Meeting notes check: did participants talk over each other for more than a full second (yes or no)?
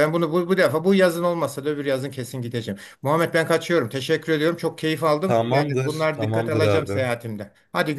yes